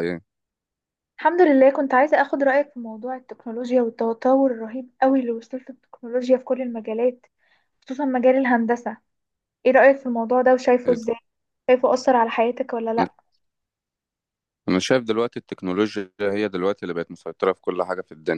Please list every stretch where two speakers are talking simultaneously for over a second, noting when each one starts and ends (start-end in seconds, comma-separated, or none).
none